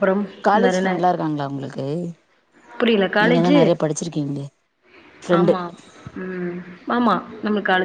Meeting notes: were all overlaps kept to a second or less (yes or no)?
yes